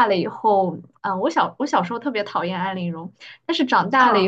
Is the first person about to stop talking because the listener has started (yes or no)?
no